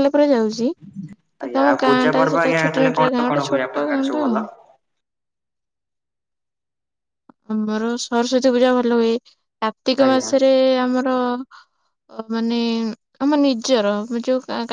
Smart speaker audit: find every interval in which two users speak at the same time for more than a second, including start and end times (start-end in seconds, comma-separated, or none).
1.4-4.4